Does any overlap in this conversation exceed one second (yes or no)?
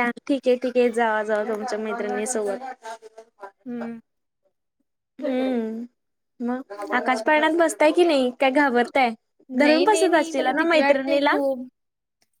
yes